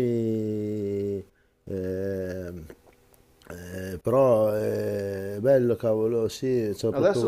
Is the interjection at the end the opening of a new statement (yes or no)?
yes